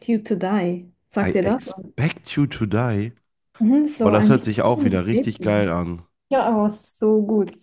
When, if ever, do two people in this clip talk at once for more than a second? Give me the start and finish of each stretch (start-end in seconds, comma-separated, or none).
4.0-5.7